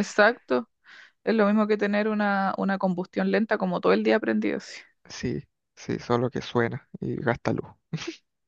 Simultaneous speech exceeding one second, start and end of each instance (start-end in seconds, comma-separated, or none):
none